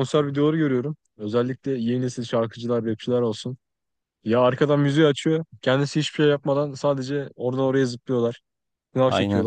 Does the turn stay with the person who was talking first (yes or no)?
yes